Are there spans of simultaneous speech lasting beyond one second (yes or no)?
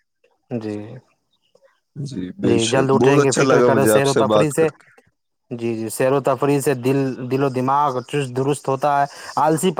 yes